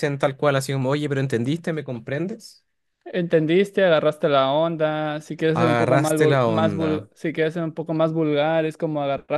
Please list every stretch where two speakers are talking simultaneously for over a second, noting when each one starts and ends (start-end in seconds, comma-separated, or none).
5.6-6.9